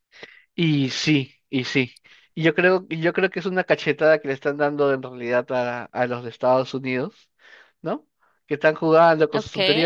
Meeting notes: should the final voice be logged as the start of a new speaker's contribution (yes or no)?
no